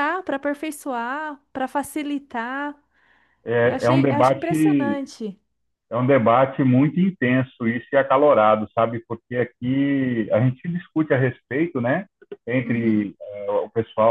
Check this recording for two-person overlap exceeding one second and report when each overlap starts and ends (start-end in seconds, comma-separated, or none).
3.6-5.0